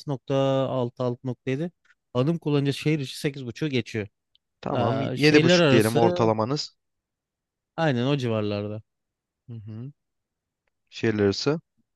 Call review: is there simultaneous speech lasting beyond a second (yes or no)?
yes